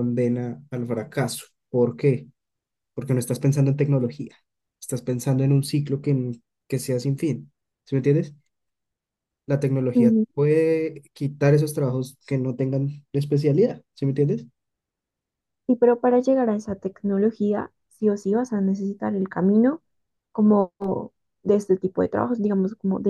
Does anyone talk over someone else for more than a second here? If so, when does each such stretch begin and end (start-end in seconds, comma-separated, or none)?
none